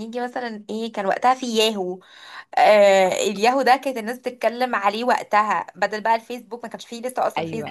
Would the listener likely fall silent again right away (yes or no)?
no